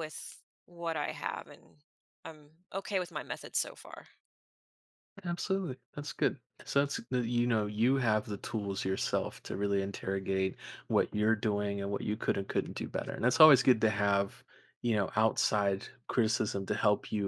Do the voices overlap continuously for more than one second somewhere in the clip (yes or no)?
no